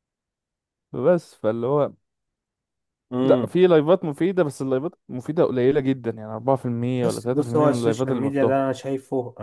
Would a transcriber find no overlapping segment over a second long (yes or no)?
no